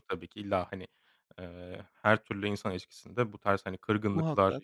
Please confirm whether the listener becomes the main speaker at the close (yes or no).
no